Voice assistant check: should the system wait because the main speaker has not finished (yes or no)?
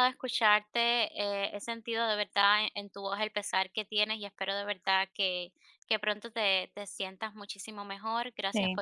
yes